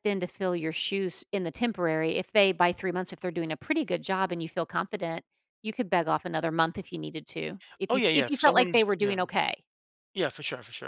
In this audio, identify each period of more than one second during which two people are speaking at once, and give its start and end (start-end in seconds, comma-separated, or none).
7.9-9.2